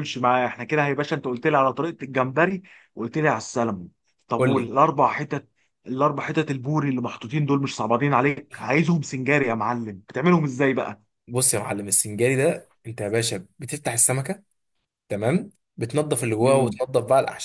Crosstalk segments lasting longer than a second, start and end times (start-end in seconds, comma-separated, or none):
none